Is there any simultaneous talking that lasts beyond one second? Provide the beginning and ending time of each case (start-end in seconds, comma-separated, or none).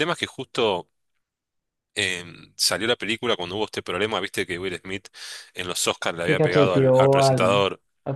6.2-7.6